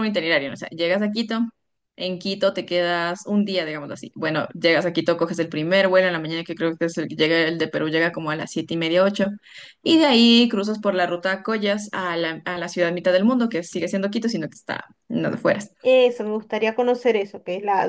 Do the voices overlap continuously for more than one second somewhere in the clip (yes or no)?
no